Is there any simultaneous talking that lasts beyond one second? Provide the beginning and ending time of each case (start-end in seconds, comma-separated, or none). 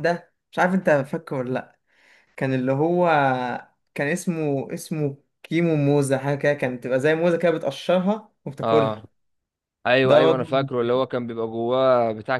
none